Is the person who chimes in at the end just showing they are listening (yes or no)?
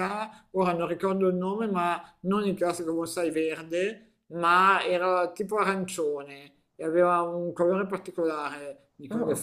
yes